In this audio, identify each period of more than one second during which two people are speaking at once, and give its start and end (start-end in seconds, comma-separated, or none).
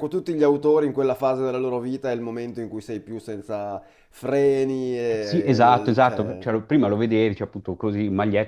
5.2-6.5